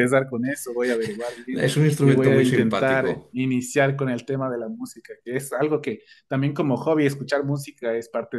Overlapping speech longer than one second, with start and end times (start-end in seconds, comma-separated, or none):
1.5-3.3